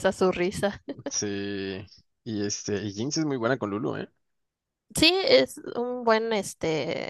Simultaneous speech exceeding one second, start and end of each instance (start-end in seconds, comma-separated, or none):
none